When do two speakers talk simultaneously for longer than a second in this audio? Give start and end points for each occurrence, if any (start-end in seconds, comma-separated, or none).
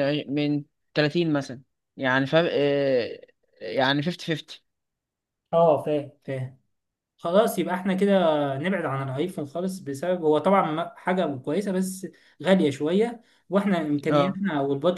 none